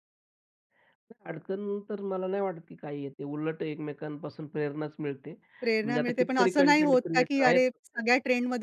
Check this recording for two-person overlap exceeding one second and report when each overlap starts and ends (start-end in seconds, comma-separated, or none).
5.8-7.8